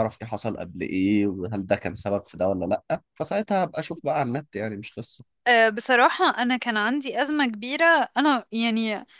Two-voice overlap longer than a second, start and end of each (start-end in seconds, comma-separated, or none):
none